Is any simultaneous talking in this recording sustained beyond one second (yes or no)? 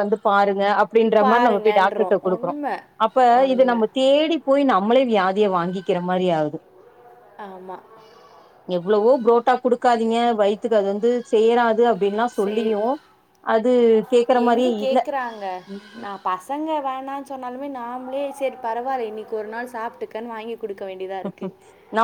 yes